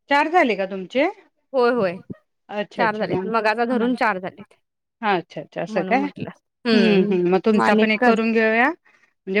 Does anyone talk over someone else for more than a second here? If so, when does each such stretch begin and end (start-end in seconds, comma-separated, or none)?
none